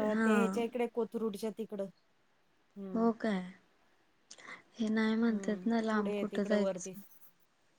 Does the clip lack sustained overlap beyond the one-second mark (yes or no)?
no